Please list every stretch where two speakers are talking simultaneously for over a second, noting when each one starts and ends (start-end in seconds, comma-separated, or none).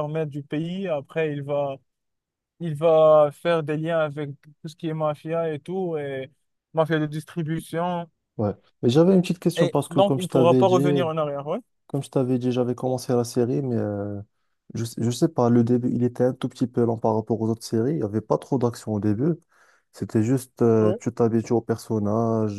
9.6-11.1